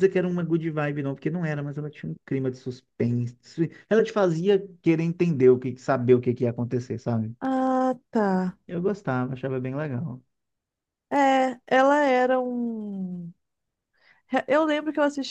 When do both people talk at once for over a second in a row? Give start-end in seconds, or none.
none